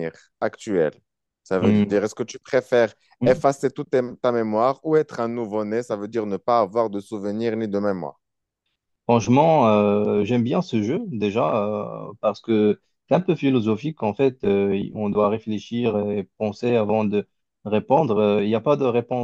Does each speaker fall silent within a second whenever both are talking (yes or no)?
yes